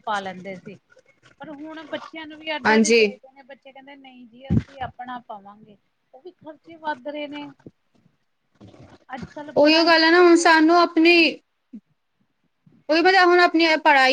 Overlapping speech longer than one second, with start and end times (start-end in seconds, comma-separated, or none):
9.6-11.1